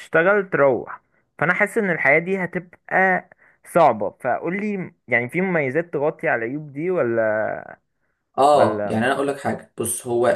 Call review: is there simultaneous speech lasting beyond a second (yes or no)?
no